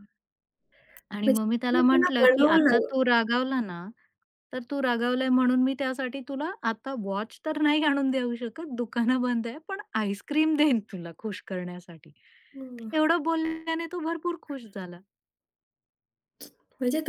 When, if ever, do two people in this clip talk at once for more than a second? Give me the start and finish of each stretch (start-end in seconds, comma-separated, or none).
1.2-2.8